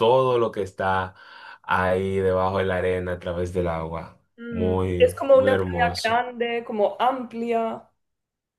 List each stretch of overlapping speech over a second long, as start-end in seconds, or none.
4.4-6.2